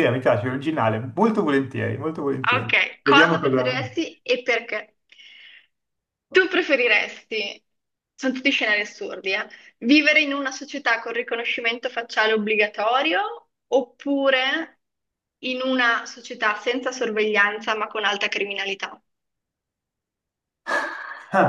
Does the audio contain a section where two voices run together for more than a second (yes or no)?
yes